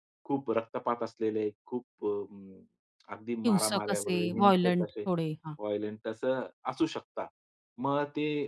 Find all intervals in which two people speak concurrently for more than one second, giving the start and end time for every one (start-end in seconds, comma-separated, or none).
3.4-5.0